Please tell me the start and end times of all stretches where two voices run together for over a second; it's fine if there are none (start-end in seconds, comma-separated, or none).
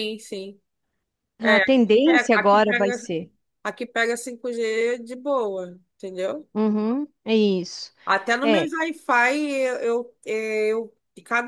1.4-3.0